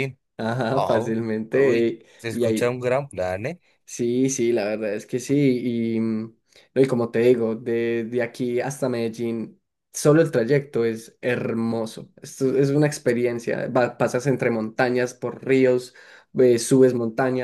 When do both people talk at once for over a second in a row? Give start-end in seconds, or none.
0.7-2.8